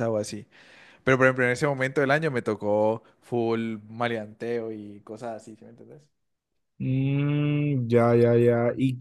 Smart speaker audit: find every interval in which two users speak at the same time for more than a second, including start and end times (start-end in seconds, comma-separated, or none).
none